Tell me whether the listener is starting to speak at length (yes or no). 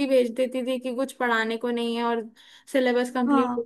no